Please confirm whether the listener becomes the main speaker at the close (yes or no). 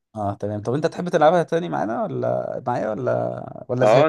yes